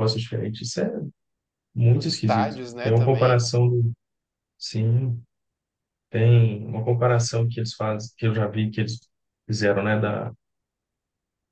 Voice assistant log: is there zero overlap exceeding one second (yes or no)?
no